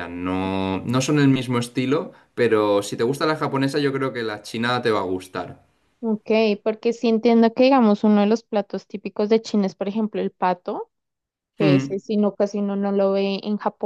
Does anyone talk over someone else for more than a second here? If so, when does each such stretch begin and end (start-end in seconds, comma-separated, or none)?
none